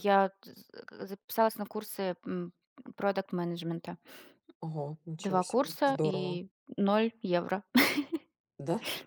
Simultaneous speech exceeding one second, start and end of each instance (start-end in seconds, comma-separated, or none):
5.2-6.4